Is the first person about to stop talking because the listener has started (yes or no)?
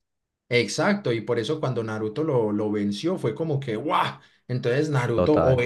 no